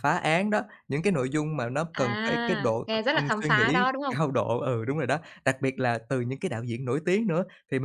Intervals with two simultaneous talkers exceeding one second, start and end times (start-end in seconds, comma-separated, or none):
1.9-4.2